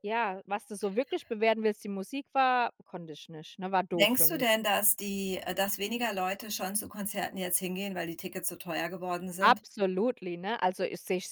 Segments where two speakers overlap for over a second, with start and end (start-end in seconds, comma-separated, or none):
none